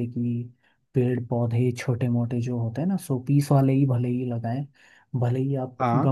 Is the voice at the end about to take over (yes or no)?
no